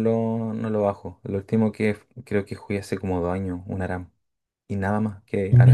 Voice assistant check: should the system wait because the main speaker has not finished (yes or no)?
no